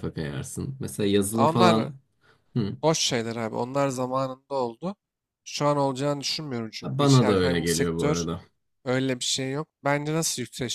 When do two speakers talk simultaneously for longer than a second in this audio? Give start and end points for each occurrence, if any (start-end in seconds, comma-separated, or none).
6.8-8.2